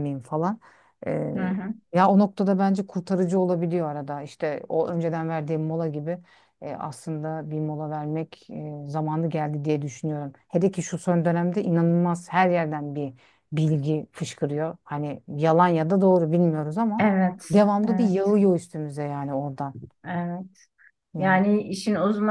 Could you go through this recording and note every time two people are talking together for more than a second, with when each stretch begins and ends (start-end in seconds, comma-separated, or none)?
none